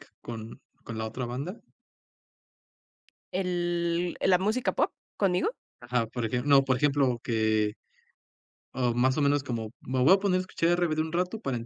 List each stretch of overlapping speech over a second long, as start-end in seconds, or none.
none